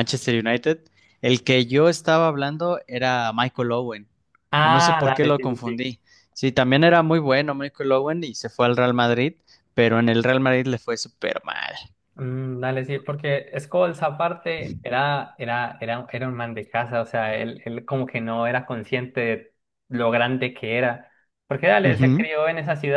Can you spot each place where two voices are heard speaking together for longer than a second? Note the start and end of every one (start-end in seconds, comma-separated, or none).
4.6-5.8